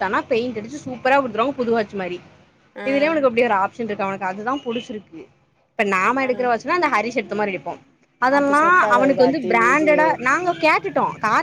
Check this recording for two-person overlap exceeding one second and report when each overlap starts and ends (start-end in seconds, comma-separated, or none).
8.4-10.1